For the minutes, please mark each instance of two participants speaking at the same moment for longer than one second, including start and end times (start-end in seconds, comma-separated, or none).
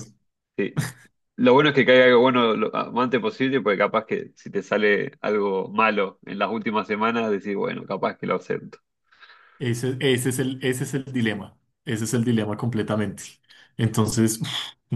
none